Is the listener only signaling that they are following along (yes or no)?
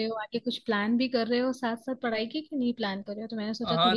no